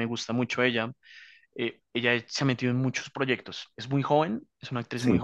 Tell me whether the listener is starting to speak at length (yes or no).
no